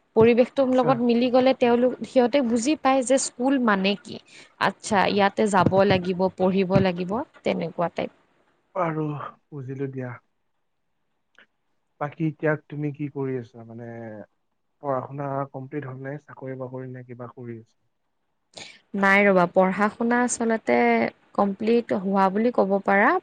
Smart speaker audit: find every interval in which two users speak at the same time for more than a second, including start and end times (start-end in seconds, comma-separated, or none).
none